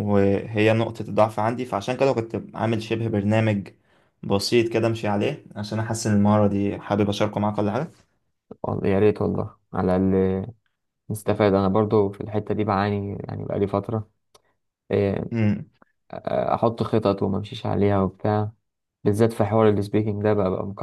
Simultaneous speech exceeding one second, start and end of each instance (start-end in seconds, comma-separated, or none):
none